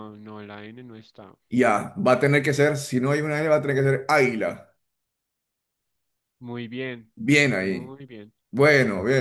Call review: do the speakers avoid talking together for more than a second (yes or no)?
yes